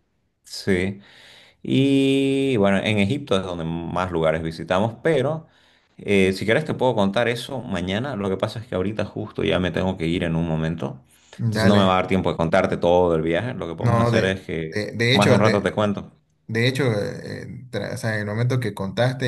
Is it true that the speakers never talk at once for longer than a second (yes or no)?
no